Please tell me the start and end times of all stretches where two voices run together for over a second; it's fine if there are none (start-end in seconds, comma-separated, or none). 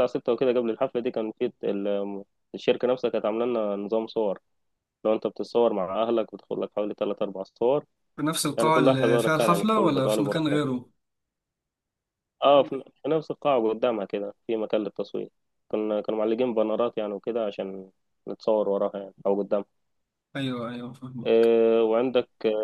8.6-10.8